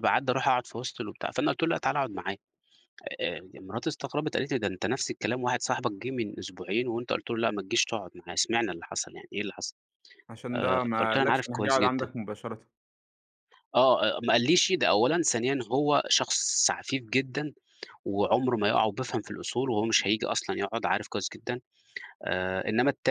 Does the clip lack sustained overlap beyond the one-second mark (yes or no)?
no